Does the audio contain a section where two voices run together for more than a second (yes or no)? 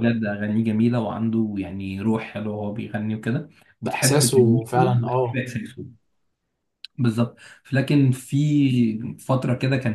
yes